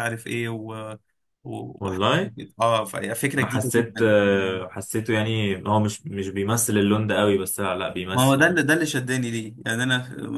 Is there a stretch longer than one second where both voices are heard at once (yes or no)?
yes